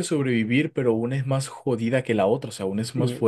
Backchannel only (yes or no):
no